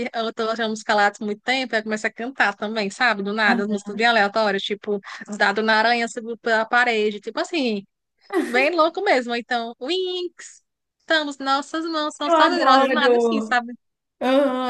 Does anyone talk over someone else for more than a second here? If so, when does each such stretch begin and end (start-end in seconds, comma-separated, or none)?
12.2-13.6